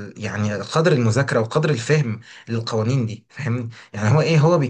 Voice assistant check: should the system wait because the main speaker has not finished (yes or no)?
yes